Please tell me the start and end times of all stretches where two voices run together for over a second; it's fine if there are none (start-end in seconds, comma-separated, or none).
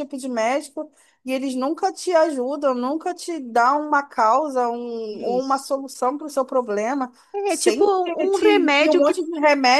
7.5-9.2